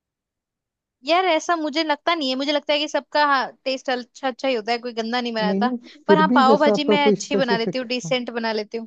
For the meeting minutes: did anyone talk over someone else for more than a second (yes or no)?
yes